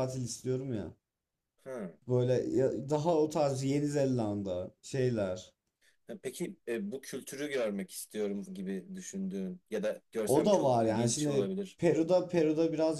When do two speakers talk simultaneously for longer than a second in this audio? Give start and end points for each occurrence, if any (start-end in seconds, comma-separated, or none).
10.2-11.8